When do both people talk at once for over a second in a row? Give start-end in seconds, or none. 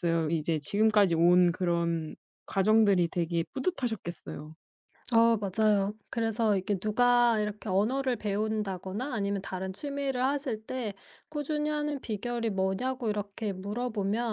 none